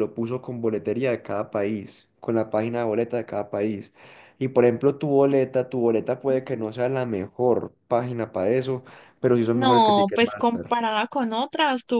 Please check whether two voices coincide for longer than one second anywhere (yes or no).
yes